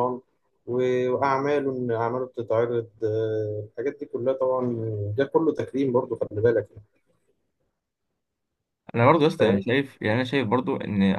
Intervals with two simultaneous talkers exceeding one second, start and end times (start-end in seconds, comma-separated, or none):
none